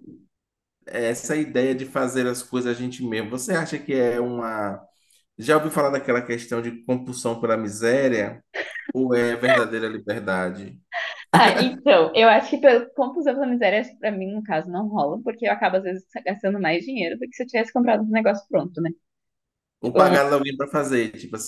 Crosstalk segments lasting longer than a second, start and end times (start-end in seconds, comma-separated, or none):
none